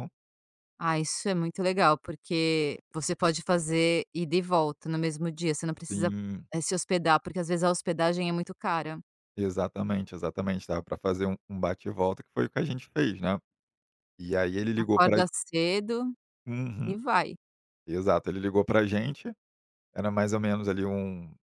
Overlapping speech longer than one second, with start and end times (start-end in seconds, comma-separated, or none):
none